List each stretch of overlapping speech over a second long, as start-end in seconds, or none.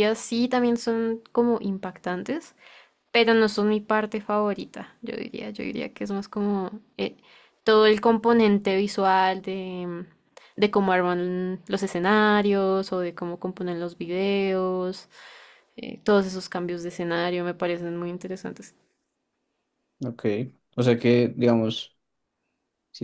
none